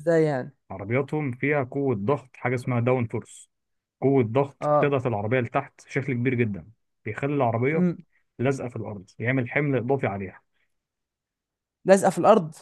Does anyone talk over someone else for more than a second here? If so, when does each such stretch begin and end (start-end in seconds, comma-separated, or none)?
none